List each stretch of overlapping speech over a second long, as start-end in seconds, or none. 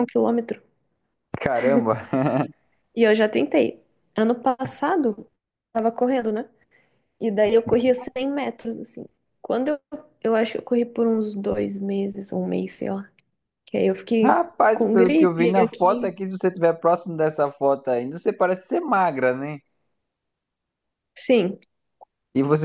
14.2-16.2